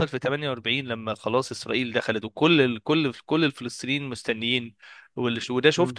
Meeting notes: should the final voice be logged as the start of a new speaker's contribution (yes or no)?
no